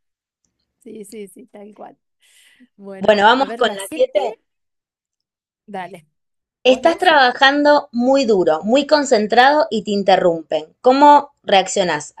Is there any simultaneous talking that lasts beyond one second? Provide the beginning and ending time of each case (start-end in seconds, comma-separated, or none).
3.0-4.2